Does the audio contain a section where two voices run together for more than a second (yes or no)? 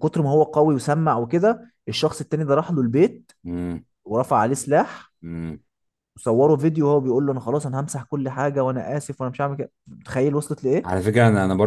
no